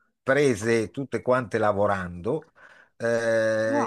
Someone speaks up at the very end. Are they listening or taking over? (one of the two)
listening